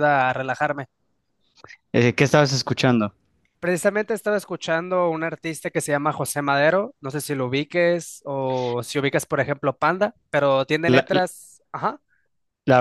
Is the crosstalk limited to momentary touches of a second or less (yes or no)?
yes